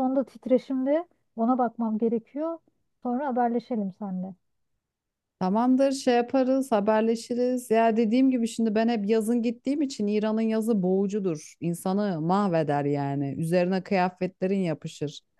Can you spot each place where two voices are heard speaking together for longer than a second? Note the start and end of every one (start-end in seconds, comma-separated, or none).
none